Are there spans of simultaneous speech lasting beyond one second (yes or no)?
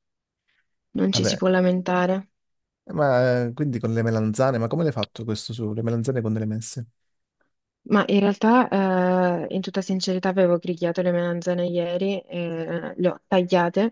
no